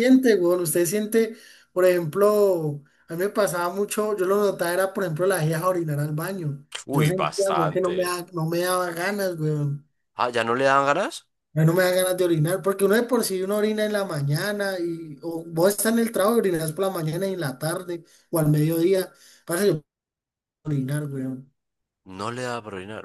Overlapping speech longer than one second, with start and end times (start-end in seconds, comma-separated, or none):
6.9-8.2